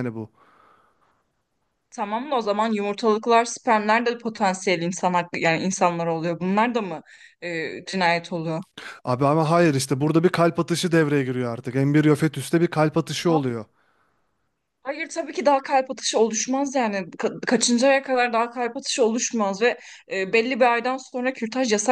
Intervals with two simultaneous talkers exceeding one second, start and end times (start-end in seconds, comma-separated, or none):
none